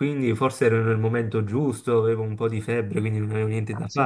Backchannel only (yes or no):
no